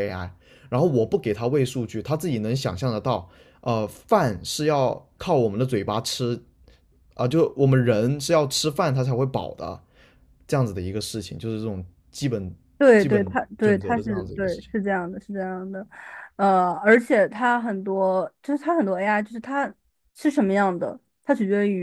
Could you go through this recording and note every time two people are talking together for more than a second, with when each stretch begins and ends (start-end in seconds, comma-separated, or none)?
13.0-14.7